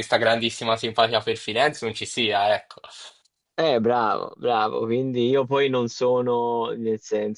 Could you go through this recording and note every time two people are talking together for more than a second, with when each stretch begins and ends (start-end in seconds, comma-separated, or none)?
none